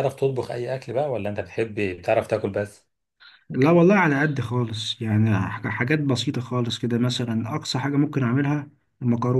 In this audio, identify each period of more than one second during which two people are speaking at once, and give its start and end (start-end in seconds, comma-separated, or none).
none